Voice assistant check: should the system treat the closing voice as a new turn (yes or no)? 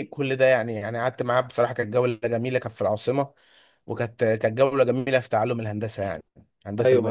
yes